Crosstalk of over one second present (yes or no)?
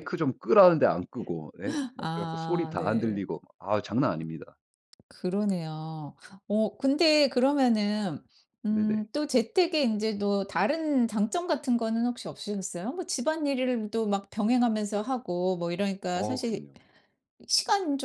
yes